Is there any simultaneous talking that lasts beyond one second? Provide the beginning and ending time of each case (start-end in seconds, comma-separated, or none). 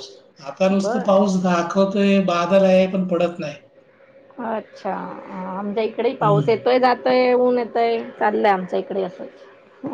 none